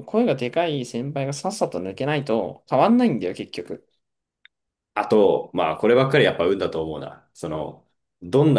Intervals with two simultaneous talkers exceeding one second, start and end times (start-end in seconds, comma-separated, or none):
none